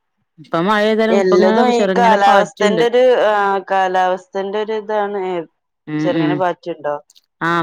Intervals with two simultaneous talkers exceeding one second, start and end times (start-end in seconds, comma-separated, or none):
1.2-2.8